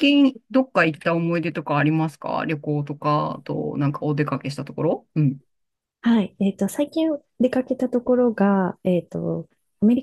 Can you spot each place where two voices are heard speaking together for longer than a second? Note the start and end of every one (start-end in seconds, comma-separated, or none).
none